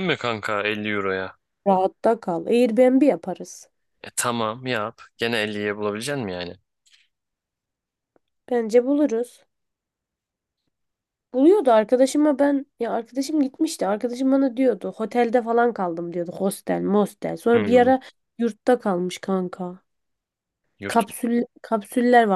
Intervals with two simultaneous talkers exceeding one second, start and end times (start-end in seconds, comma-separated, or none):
none